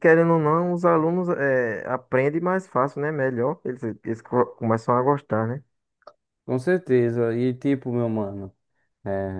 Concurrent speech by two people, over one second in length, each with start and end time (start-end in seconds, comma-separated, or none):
none